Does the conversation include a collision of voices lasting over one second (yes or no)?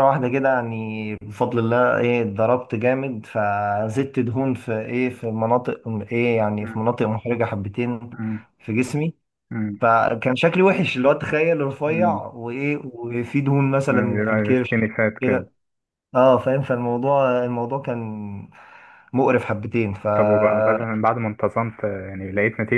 yes